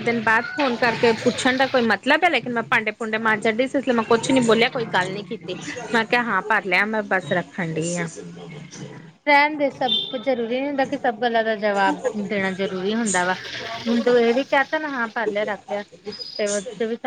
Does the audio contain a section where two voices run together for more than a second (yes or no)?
no